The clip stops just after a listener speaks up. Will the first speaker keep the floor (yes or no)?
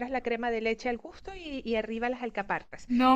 yes